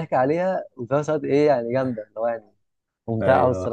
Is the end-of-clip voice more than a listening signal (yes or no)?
yes